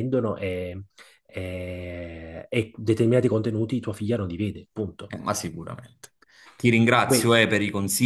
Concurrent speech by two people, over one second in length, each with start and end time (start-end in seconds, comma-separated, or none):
none